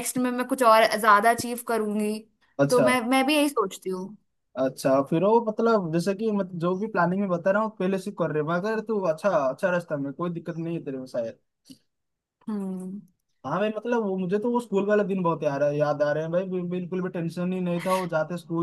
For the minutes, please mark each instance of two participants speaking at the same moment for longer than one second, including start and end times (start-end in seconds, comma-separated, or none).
none